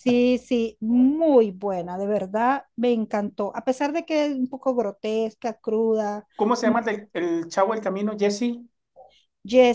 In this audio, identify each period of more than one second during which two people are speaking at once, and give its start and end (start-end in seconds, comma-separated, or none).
none